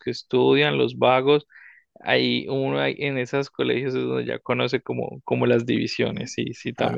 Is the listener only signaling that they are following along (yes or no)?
no